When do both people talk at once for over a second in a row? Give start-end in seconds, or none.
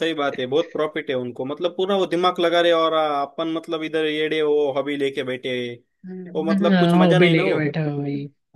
6.3-7.6